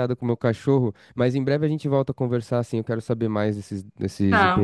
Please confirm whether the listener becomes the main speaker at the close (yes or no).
no